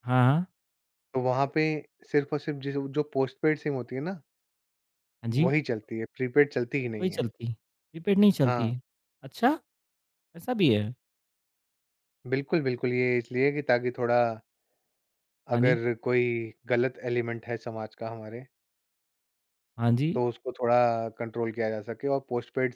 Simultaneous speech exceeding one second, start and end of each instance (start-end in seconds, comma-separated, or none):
none